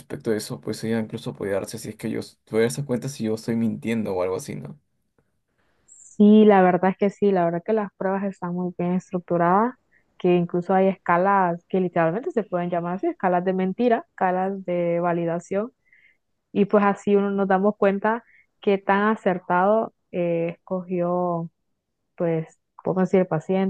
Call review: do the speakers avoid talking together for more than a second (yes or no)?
yes